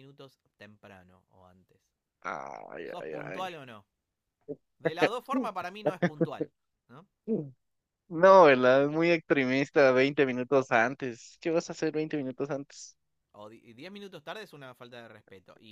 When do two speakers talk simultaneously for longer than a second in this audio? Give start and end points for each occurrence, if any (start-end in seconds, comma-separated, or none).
none